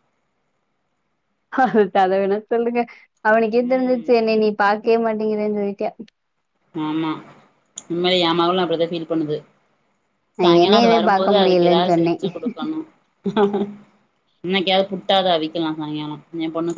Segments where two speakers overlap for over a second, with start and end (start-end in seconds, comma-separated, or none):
10.4-12.1